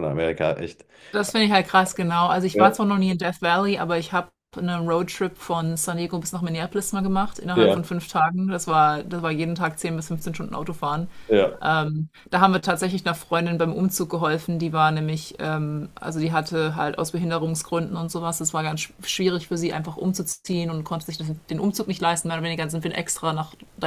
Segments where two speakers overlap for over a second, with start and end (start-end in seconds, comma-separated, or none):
none